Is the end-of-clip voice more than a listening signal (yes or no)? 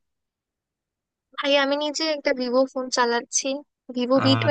no